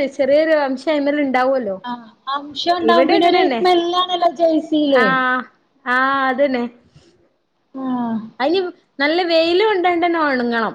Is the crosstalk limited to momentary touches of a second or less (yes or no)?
yes